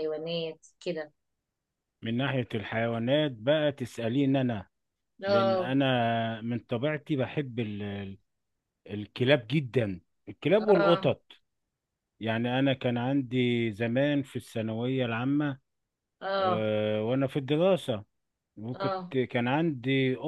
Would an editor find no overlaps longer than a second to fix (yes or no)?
yes